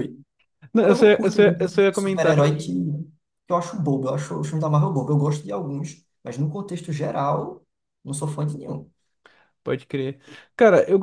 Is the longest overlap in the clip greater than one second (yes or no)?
yes